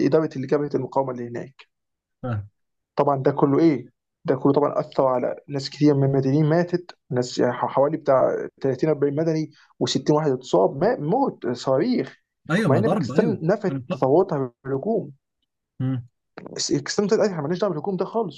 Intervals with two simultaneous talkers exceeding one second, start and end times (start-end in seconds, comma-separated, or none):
12.7-14.1